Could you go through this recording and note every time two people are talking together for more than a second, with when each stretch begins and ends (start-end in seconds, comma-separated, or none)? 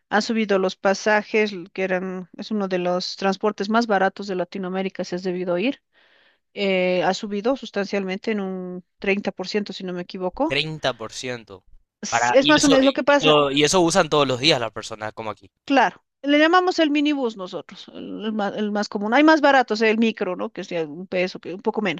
12.1-13.3